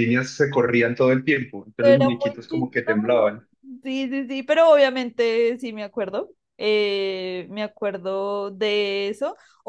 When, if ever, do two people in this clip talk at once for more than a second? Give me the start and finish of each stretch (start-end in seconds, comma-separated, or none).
1.8-3.3